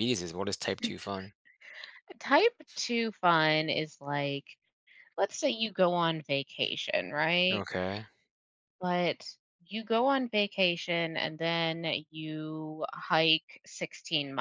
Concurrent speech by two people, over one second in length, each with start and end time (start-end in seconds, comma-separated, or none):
none